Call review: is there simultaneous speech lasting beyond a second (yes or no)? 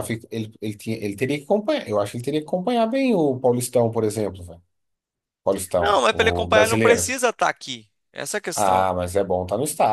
yes